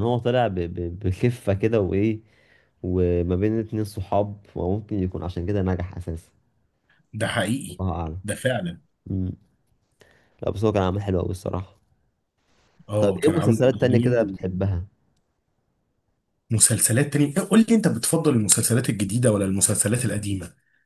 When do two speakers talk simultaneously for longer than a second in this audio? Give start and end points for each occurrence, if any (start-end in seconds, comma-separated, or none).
13.0-14.4